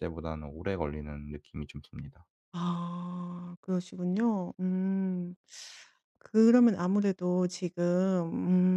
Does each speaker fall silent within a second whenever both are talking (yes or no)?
yes